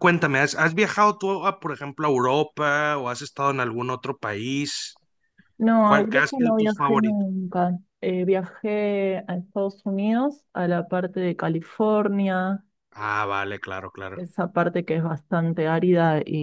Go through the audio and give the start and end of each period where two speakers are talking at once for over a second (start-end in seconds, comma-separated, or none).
5.8-7.3